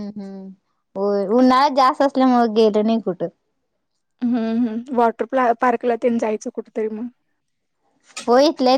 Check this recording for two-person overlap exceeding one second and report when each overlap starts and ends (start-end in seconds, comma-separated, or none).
none